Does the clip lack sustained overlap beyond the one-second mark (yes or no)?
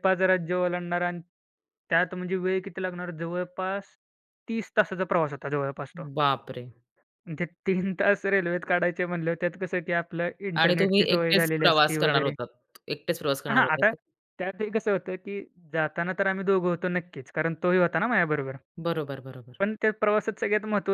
no